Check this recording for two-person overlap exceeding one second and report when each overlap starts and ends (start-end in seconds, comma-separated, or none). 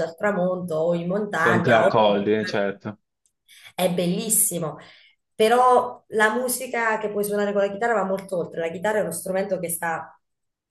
none